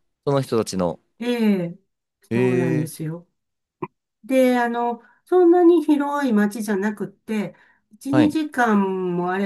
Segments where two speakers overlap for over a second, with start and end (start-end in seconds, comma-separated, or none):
none